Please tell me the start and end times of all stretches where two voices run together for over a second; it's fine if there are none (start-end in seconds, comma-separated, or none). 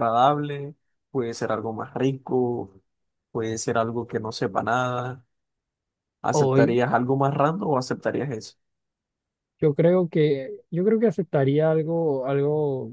none